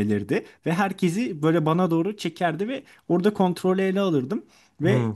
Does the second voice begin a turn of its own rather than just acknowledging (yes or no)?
no